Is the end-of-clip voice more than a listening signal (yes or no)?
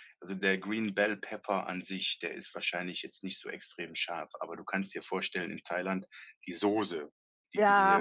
no